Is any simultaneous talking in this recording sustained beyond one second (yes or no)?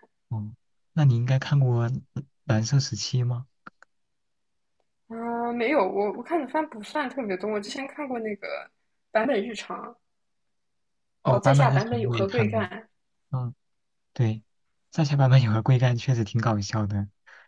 yes